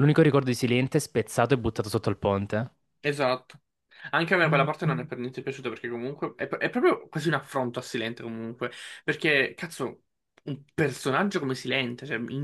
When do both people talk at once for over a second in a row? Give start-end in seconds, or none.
none